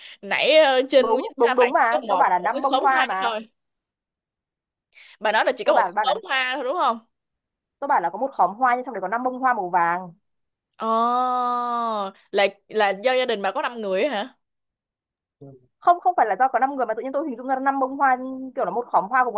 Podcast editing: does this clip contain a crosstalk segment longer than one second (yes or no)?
yes